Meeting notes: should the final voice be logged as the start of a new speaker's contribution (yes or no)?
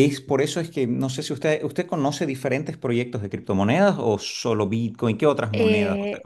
yes